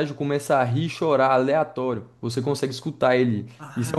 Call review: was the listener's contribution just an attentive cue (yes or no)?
no